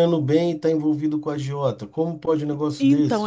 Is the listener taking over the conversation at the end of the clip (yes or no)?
yes